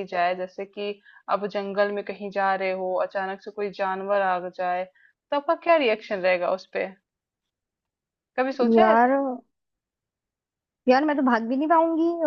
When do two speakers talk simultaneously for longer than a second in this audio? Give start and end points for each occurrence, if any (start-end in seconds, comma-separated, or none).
none